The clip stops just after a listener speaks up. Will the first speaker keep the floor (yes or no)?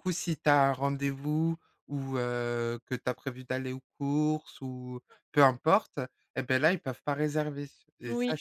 no